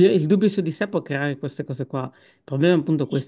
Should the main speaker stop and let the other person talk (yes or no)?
no